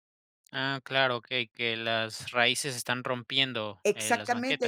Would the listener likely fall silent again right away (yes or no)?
no